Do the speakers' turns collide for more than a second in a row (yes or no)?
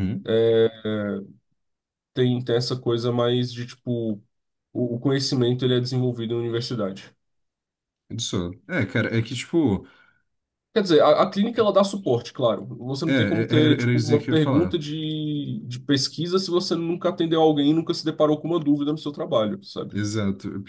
yes